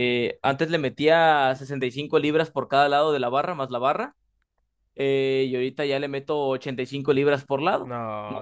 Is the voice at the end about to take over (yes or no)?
yes